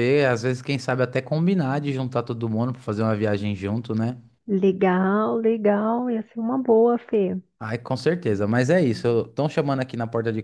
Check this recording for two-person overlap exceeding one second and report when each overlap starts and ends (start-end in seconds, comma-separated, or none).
none